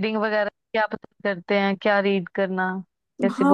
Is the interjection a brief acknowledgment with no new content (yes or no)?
no